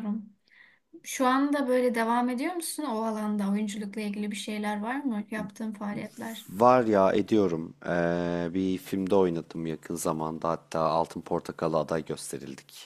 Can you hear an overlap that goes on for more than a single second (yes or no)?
no